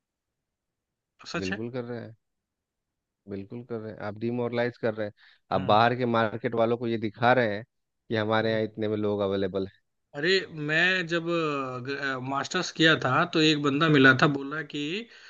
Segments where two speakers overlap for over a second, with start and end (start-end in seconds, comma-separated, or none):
none